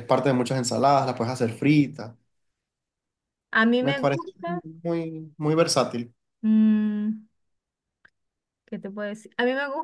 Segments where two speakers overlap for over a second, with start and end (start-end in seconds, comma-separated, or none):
none